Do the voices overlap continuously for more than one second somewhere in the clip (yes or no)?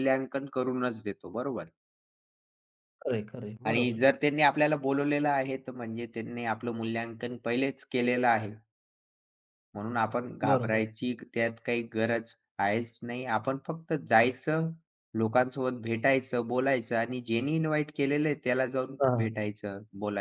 no